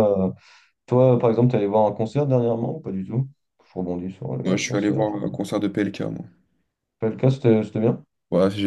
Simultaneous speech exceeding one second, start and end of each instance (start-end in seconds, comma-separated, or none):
none